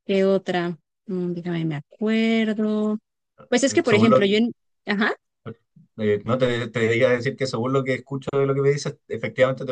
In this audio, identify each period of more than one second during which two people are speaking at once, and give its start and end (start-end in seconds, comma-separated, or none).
none